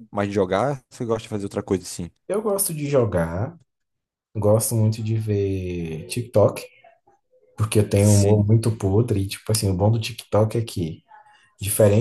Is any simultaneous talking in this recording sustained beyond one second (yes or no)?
no